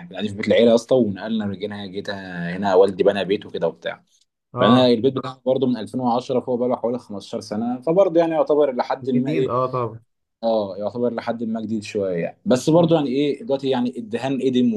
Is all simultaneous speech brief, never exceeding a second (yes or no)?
yes